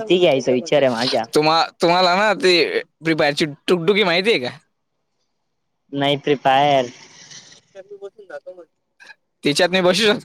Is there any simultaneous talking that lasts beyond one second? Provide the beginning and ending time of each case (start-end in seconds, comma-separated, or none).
none